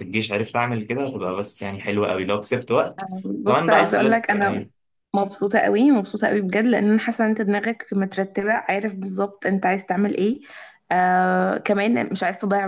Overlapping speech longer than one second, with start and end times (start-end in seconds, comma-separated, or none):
3.4-4.7